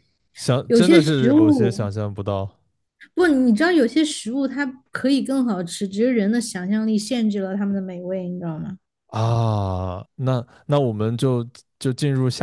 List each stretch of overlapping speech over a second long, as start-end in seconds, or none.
0.7-1.9